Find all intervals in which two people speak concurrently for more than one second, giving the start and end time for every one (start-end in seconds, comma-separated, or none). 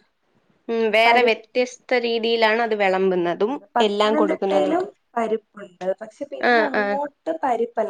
3.1-4.9